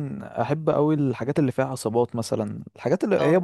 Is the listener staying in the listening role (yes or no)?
yes